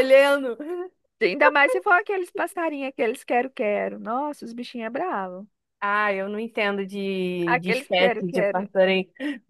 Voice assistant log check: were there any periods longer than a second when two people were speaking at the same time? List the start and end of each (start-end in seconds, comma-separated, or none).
7.5-8.7